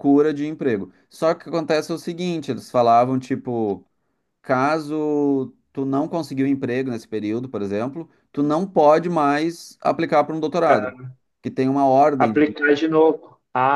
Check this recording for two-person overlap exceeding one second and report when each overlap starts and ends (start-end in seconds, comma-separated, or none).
none